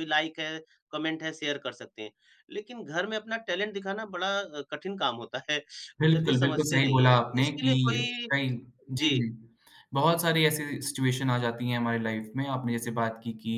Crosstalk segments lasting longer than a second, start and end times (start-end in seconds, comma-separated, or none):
6.0-7.7